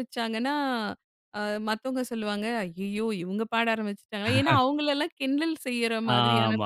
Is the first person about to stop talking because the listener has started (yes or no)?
yes